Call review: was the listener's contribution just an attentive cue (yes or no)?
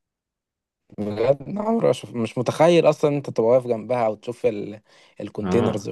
no